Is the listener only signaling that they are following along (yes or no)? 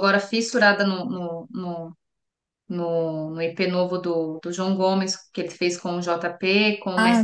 yes